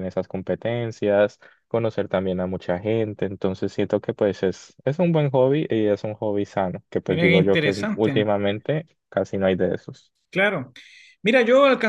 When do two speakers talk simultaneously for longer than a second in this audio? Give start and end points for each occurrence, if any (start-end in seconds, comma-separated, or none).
7.0-8.2